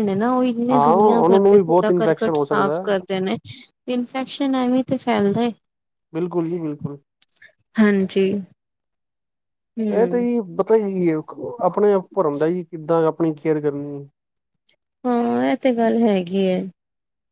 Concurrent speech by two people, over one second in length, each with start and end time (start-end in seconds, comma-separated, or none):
0.7-2.9